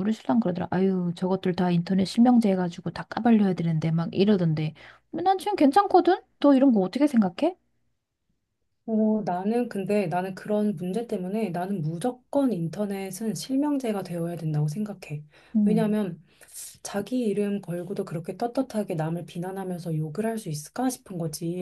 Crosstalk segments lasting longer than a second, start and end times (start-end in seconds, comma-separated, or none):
none